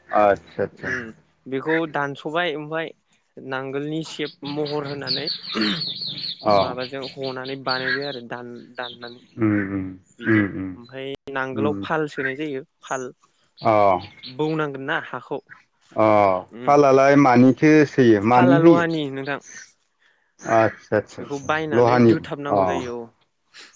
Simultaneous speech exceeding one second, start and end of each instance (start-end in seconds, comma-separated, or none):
21.2-22.6